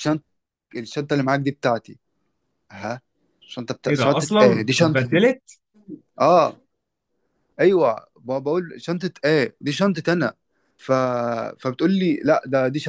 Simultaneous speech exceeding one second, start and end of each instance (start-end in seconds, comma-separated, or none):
3.9-5.2